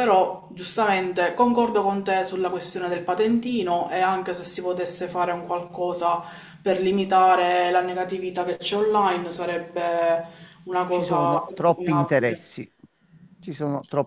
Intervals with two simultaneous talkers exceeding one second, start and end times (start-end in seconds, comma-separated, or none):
10.8-12.5